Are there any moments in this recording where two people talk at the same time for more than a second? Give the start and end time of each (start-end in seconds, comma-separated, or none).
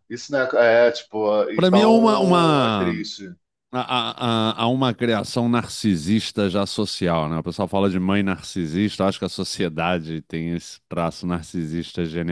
1.5-3.1